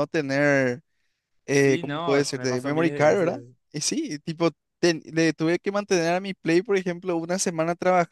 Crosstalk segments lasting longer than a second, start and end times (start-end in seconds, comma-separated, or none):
1.5-3.4